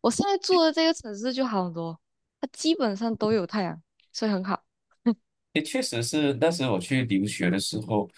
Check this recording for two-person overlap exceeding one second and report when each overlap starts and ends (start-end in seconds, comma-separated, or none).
none